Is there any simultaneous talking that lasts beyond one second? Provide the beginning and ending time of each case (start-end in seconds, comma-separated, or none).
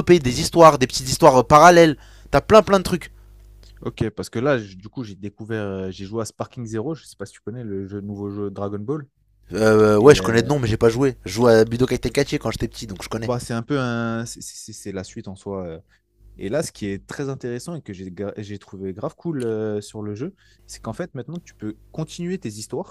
none